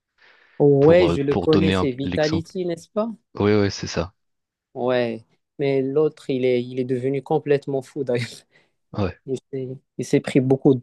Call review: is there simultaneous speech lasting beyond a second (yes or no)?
yes